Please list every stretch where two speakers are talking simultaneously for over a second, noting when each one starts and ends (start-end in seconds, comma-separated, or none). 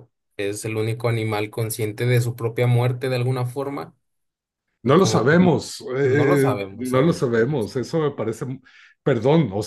6.0-7.9